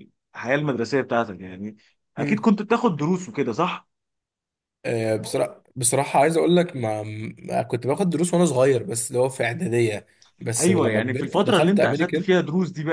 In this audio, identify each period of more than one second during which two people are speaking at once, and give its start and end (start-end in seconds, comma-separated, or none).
10.6-12.3